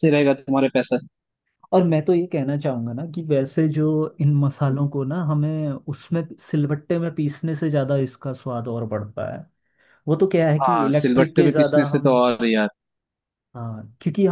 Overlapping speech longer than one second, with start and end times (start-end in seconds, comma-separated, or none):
10.6-12.2